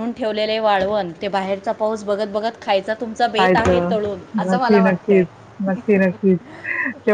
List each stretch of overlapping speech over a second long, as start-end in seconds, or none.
3.4-5.2